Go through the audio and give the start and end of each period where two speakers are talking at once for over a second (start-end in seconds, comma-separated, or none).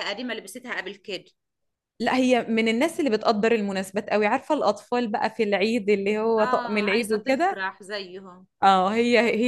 6.4-7.6